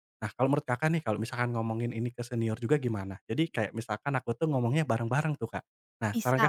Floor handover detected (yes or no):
yes